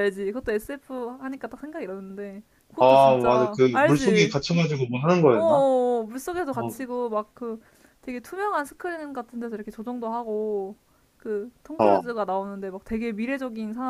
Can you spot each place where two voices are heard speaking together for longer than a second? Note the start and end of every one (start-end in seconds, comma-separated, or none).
2.8-4.3